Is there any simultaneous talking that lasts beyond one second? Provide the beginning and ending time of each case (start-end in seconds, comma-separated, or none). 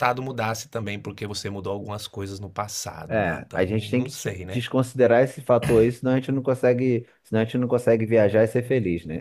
3.1-4.6